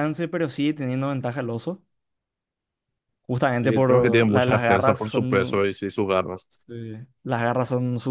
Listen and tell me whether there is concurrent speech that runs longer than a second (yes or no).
yes